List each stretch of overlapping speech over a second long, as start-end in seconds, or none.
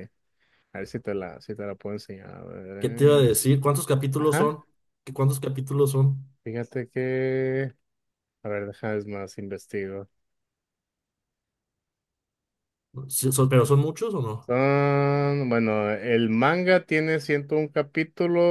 none